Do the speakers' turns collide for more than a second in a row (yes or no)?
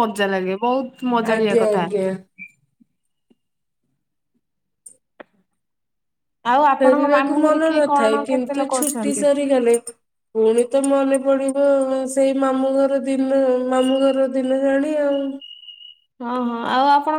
yes